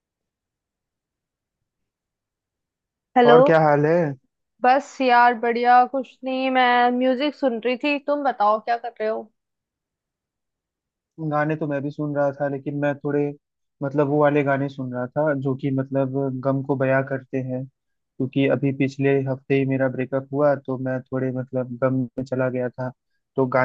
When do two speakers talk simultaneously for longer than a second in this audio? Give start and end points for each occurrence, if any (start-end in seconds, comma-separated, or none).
none